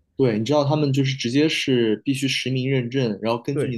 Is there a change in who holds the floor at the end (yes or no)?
no